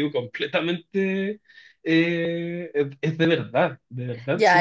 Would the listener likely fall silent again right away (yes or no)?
no